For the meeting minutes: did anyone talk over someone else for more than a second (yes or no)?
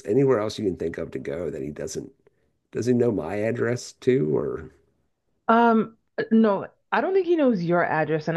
no